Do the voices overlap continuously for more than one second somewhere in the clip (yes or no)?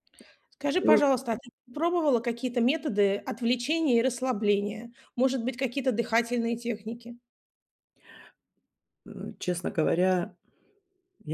no